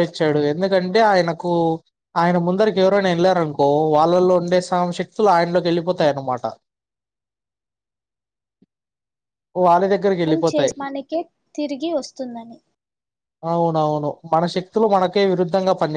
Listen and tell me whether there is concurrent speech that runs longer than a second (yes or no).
no